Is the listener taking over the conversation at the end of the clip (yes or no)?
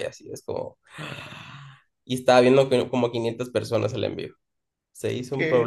yes